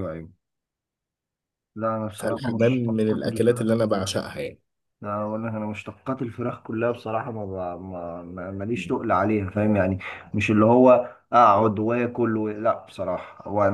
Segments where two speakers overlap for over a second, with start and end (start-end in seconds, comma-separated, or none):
2.2-4.1